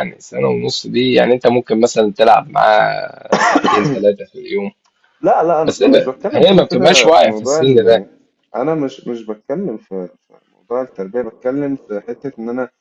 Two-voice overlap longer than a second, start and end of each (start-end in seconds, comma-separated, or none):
5.6-8.1